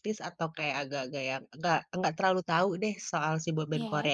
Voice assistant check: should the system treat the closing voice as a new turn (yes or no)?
no